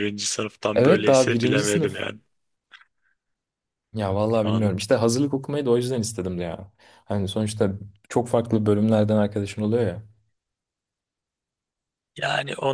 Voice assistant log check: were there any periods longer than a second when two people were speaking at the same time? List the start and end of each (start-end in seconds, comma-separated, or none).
0.7-2.1